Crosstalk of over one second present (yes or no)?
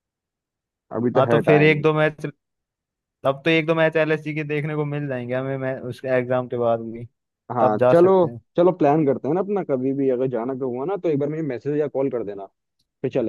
no